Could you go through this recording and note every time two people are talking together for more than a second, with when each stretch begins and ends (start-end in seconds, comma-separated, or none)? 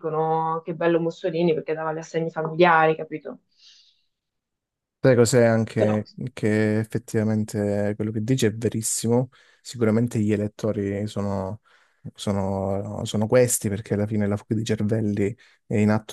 none